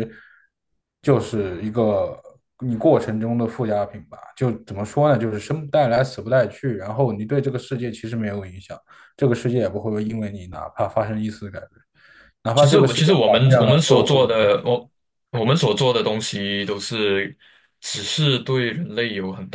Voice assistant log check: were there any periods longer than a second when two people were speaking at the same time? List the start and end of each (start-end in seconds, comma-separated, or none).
12.6-14.5